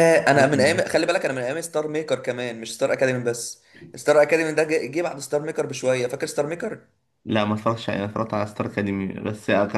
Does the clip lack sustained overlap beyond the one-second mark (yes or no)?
yes